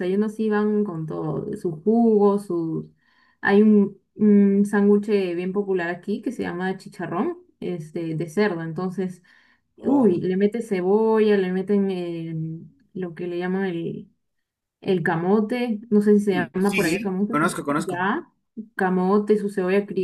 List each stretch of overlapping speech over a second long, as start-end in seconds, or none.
16.3-18.0